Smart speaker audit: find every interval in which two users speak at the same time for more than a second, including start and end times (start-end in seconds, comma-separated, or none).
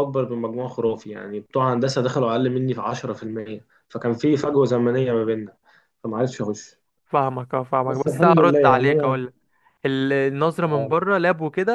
7.8-9.2